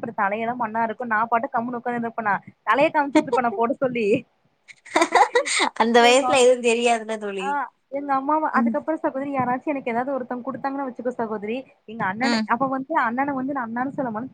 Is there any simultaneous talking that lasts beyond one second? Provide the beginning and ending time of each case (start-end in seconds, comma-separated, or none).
none